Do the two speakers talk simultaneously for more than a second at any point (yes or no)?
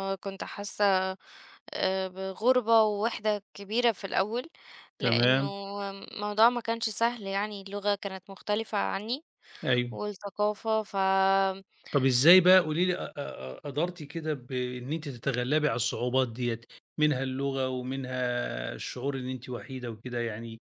no